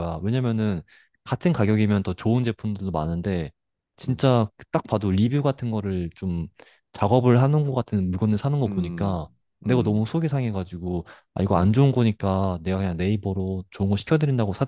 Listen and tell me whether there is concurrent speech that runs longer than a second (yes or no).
yes